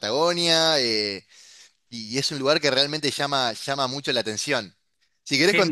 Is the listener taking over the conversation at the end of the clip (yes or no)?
no